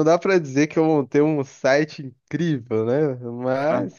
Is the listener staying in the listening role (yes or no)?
yes